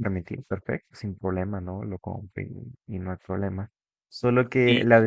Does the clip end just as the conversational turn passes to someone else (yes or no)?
no